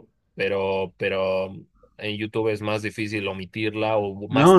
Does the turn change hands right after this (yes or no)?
yes